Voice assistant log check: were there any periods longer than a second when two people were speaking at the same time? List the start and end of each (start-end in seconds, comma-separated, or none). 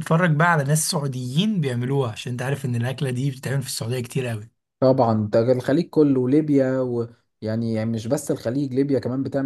none